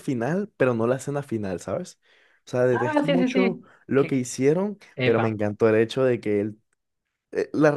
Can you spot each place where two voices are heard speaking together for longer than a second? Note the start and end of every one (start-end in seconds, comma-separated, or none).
2.7-4.2